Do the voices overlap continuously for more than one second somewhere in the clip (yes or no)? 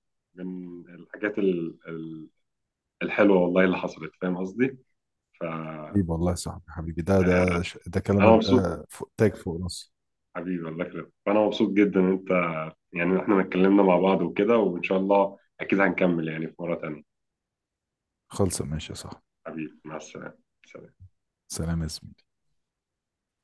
no